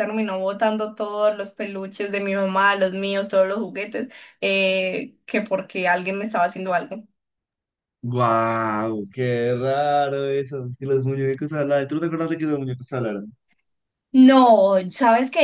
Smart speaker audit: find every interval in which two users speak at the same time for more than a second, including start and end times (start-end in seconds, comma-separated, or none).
none